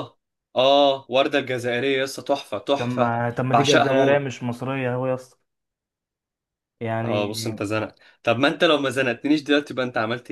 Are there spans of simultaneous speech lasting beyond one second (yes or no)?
yes